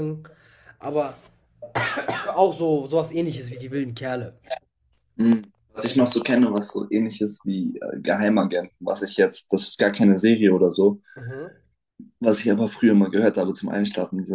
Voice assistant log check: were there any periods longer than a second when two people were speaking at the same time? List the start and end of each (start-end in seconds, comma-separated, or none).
none